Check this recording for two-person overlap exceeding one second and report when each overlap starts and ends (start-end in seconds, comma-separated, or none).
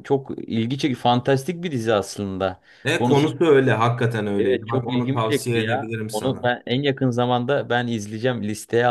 4.4-6.5